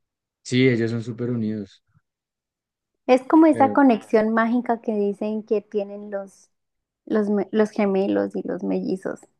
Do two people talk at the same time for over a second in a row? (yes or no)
no